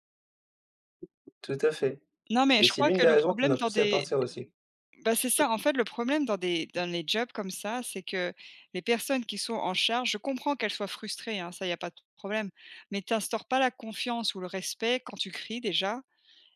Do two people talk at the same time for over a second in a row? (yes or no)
yes